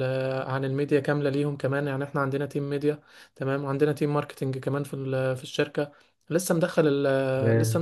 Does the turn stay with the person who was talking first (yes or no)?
yes